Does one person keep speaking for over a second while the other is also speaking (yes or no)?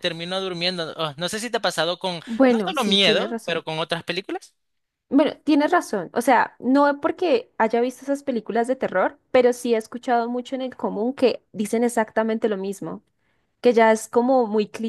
yes